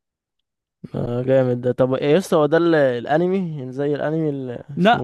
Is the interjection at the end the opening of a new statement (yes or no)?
yes